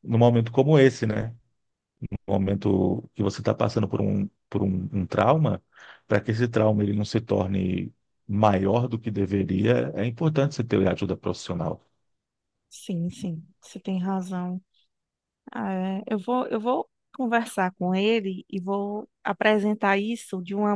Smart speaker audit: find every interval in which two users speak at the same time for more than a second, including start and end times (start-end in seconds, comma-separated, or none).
none